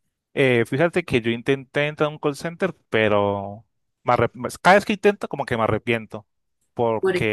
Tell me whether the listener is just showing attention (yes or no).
yes